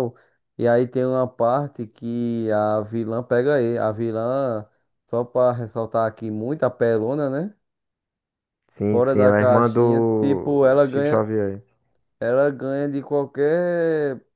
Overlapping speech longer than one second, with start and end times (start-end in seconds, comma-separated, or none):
8.9-11.2